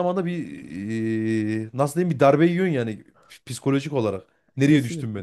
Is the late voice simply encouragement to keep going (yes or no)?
no